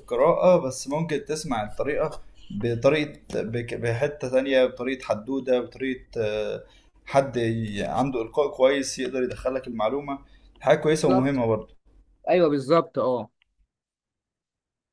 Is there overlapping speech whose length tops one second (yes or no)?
no